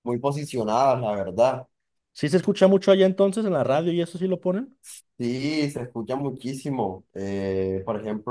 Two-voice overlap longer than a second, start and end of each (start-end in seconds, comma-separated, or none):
none